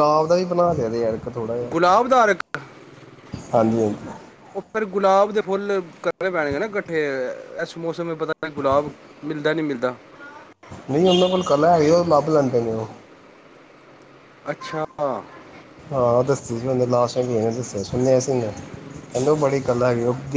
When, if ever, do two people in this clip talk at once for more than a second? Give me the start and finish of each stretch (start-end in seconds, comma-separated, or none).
none